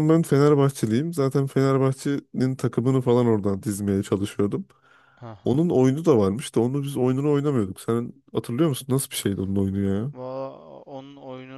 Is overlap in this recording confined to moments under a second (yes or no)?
yes